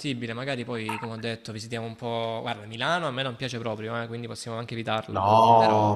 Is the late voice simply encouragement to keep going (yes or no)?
no